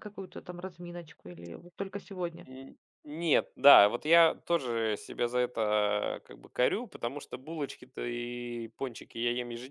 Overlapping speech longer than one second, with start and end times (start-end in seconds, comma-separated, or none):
none